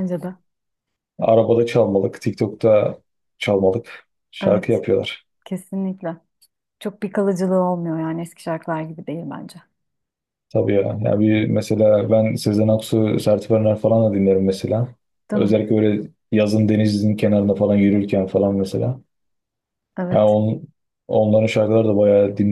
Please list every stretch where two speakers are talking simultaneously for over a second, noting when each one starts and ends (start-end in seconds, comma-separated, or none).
none